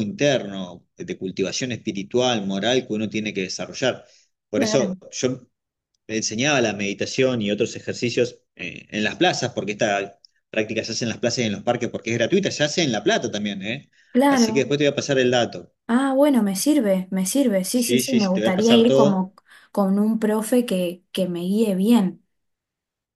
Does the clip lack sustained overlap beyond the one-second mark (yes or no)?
no